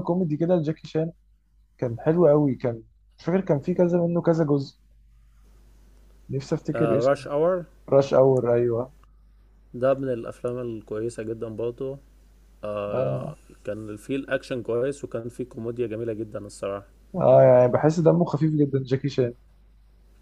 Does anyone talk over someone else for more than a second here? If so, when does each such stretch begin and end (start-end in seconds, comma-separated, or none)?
none